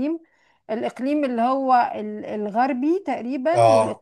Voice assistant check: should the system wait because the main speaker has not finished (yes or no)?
yes